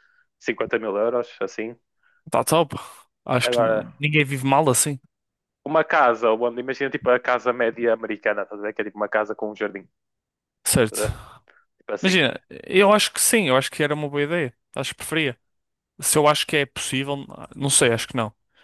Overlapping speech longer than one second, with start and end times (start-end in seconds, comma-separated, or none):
none